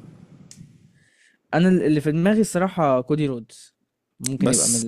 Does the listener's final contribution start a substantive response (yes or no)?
no